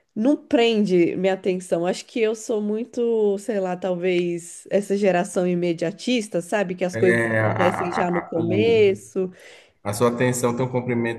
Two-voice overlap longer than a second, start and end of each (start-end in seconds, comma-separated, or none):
6.9-8.9